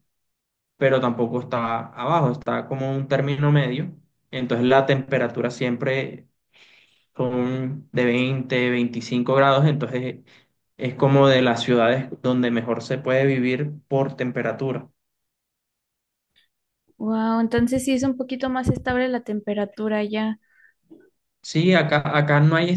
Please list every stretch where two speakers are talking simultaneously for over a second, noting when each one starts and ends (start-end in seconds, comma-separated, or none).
none